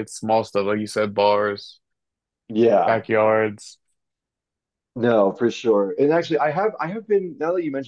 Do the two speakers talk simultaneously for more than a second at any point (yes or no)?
no